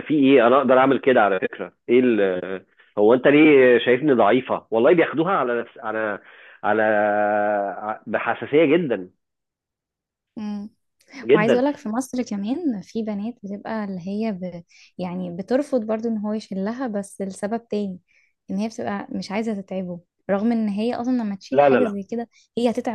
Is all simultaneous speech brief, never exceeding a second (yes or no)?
yes